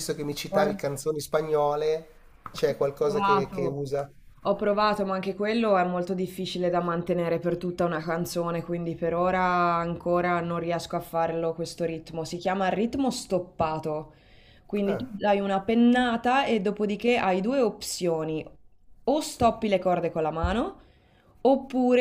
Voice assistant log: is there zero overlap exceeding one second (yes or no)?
no